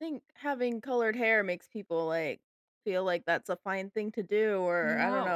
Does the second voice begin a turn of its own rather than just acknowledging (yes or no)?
no